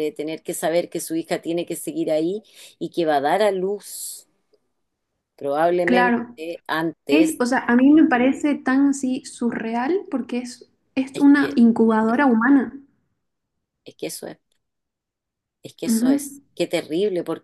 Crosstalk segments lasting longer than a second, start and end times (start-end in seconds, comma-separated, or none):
none